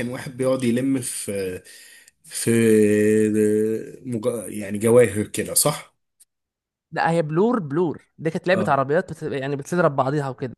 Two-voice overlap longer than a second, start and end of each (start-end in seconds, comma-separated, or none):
none